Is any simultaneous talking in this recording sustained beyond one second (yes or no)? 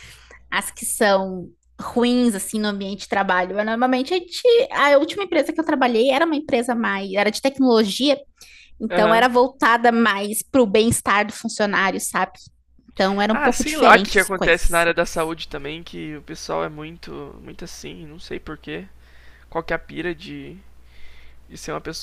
yes